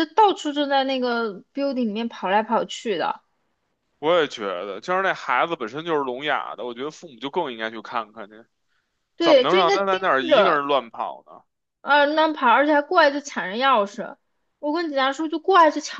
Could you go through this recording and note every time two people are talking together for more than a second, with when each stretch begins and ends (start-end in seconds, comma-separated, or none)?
9.2-10.6